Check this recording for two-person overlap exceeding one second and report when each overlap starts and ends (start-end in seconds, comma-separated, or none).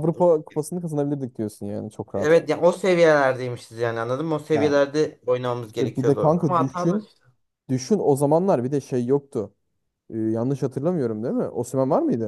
5.7-7.1